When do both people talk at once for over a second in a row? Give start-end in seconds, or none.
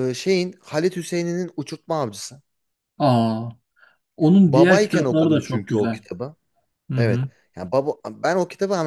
4.4-6.0